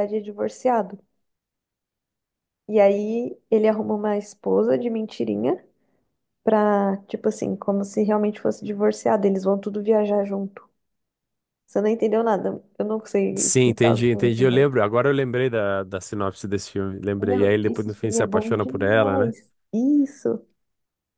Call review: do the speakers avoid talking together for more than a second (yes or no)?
no